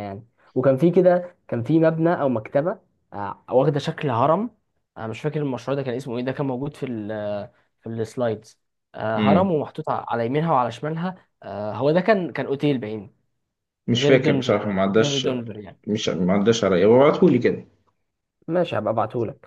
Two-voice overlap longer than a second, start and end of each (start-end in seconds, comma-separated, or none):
13.9-15.3